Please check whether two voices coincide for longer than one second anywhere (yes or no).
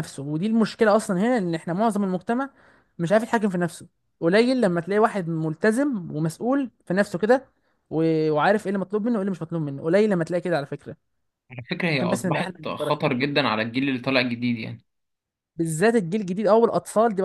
yes